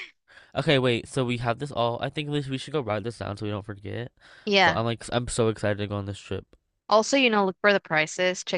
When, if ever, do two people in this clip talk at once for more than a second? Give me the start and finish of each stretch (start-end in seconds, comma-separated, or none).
none